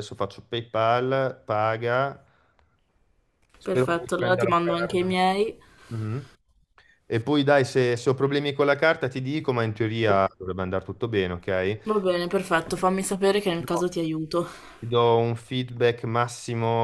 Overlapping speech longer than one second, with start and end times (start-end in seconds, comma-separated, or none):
3.7-5.2